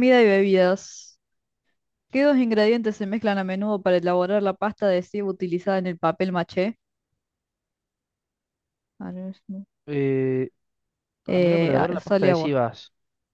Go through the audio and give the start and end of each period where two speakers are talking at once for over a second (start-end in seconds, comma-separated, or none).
11.3-12.6